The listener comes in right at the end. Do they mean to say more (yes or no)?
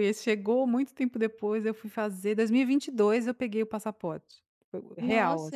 yes